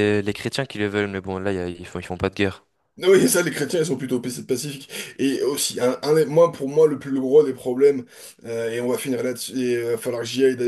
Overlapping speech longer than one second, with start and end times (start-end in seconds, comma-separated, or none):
none